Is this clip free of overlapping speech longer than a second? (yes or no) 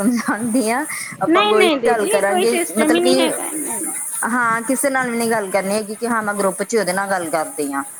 no